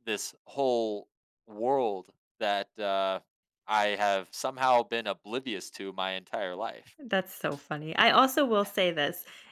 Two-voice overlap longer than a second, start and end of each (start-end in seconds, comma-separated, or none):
none